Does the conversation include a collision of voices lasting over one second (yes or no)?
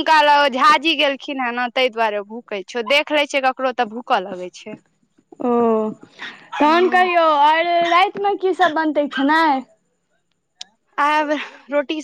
no